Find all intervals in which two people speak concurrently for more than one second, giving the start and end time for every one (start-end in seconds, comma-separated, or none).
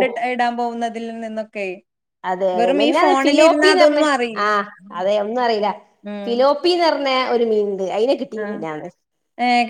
2.6-4.0